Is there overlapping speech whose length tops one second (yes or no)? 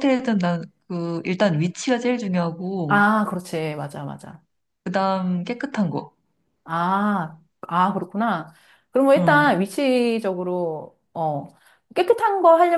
no